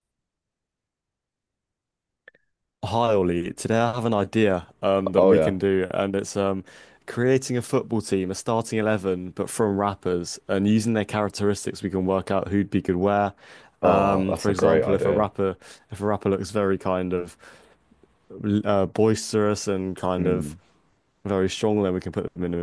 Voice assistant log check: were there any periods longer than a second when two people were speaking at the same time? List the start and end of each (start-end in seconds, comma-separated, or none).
13.8-15.3